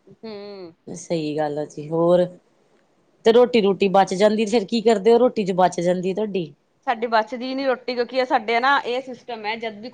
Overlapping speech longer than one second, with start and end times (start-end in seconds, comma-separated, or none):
none